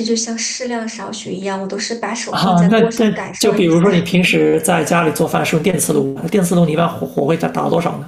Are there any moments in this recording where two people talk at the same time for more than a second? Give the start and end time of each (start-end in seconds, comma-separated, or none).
2.3-3.9